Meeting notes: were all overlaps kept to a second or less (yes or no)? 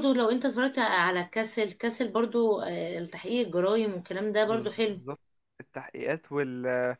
yes